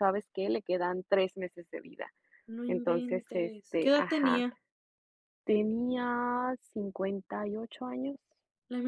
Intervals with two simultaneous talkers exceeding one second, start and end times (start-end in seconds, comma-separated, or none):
2.7-4.5